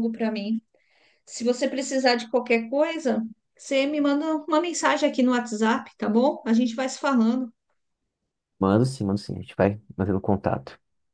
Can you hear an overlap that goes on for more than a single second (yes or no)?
no